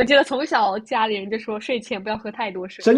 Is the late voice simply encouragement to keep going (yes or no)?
no